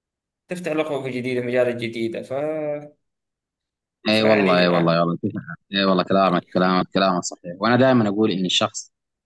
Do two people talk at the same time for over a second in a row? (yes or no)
no